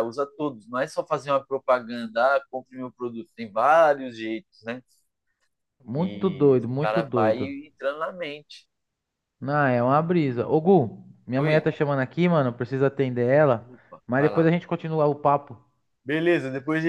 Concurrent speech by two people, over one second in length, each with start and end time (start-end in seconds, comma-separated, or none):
6.0-7.5